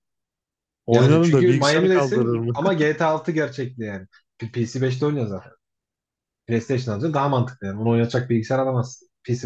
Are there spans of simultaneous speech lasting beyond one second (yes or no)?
yes